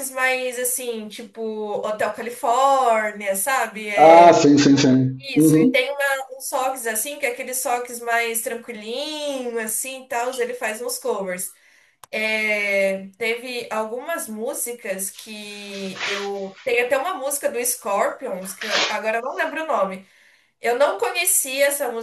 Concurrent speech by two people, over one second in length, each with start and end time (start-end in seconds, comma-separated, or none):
none